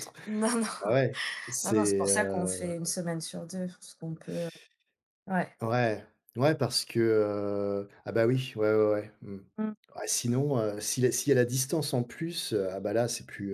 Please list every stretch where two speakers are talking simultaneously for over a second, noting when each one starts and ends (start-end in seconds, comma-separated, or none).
1.6-2.9